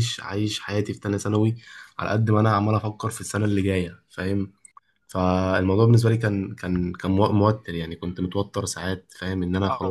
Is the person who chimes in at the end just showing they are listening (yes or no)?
no